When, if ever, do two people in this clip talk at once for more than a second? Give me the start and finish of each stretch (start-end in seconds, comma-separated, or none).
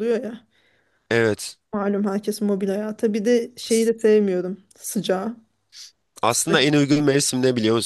none